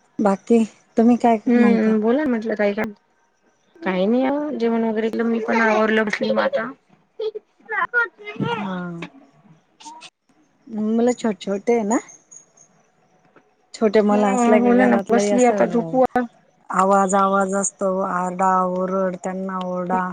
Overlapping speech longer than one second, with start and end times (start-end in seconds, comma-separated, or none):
14.1-16.0